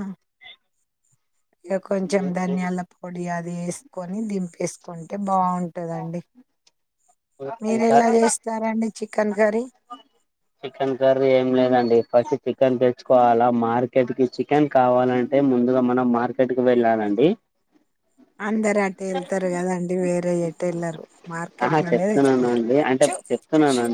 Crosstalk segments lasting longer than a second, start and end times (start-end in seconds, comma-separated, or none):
none